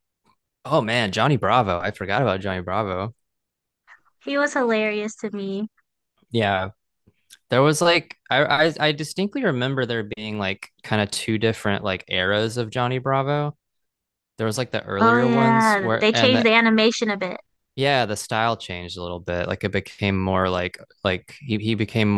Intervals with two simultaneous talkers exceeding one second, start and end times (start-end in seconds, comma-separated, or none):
15.0-16.5